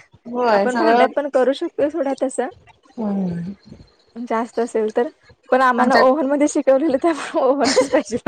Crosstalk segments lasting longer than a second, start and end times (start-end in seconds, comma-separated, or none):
none